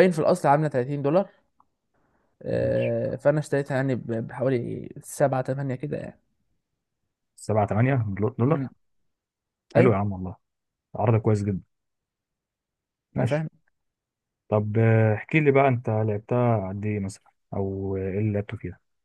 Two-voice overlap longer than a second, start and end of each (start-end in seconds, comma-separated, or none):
none